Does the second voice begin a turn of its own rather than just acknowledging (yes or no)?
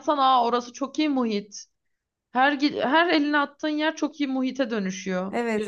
yes